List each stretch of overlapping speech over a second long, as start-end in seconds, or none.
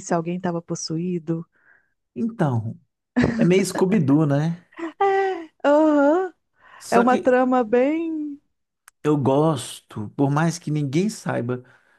none